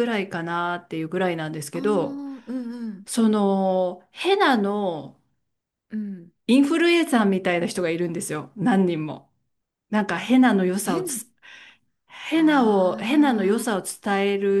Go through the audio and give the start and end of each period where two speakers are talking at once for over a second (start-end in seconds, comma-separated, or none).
12.3-13.7